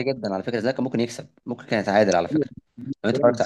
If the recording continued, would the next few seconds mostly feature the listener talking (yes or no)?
yes